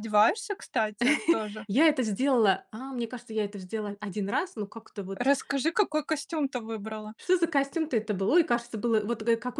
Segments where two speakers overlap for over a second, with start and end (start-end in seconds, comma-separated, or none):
none